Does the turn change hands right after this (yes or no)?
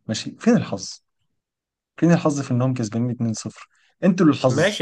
yes